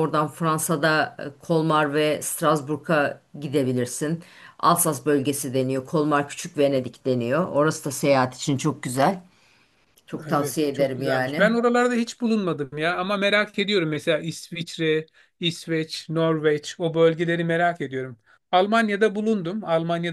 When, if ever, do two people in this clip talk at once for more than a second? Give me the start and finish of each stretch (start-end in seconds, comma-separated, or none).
10.3-11.5